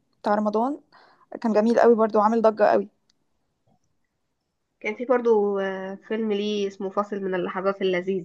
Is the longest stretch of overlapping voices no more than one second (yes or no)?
yes